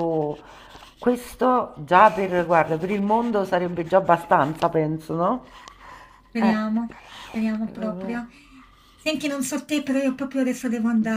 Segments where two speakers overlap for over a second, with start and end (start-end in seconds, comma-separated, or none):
none